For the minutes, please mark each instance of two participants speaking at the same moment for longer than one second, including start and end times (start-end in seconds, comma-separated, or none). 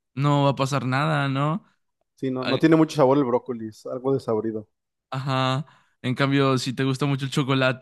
none